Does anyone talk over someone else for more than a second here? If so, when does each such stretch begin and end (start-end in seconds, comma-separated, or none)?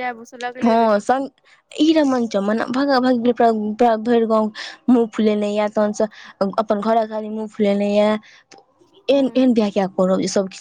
none